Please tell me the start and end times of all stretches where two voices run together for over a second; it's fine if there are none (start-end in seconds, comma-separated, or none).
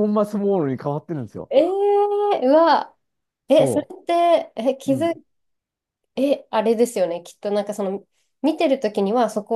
none